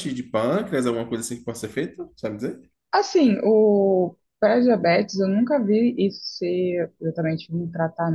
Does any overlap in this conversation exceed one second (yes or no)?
no